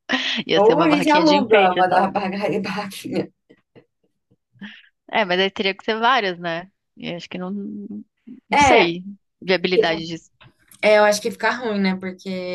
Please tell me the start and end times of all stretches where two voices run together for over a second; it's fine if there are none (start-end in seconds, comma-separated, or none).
0.5-2.1